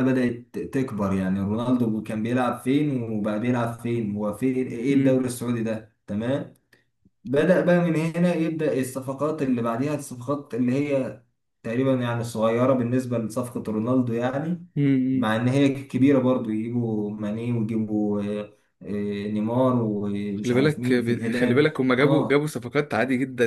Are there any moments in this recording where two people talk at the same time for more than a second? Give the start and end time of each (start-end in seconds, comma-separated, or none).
20.3-22.5